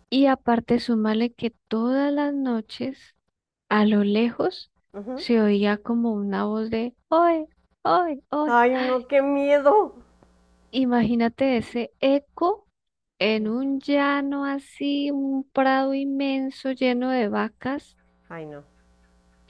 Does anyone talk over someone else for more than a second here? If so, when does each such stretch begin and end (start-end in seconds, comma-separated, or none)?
none